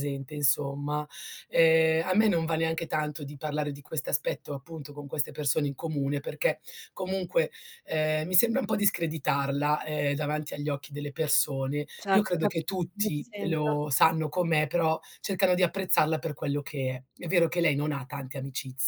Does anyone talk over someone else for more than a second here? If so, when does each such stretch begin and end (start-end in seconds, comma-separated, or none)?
12.0-13.6